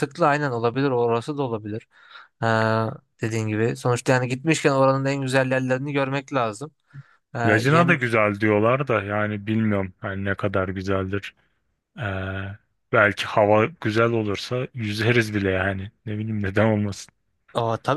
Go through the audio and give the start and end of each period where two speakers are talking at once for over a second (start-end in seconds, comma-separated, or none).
none